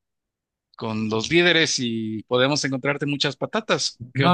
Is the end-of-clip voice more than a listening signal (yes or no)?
yes